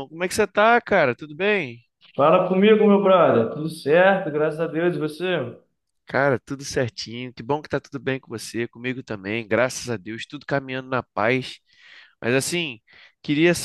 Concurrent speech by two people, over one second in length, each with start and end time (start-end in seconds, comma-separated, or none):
none